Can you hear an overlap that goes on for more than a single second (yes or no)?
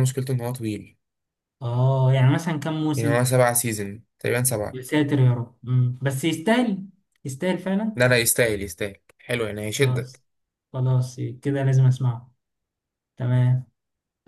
no